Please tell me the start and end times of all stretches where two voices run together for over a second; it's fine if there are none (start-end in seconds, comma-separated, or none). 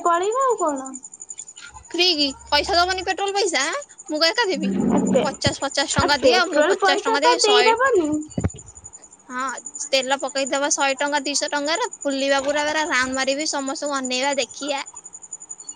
6.0-7.7